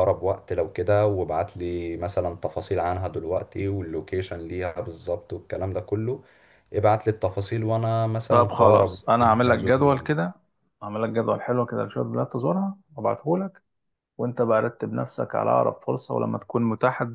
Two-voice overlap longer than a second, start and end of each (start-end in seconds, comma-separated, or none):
8.3-10.1